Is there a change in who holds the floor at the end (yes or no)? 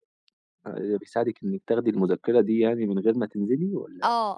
yes